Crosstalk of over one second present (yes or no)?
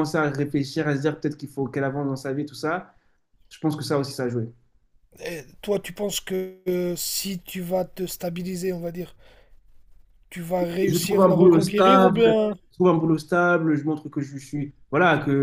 yes